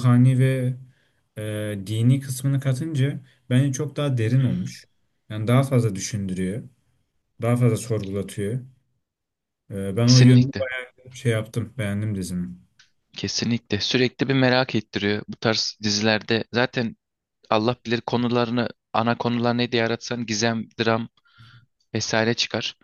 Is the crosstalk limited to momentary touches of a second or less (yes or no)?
yes